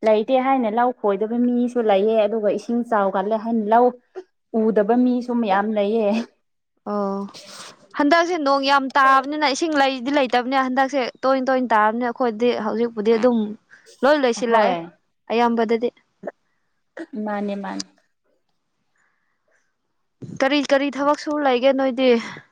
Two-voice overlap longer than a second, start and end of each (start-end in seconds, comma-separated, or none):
none